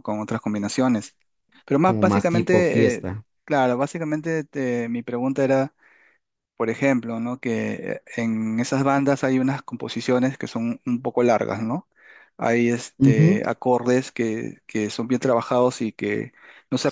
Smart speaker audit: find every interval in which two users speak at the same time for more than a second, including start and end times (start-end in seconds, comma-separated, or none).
1.9-3.1